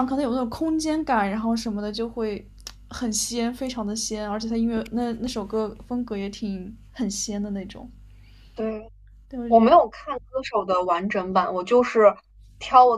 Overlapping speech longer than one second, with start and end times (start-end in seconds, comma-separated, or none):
none